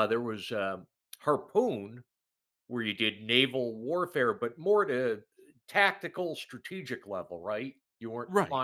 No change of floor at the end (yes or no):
yes